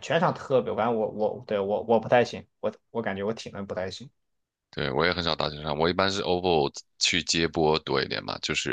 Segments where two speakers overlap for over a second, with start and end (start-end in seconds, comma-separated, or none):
none